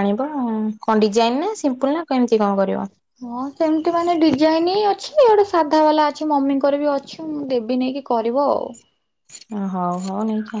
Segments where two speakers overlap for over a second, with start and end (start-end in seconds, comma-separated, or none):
none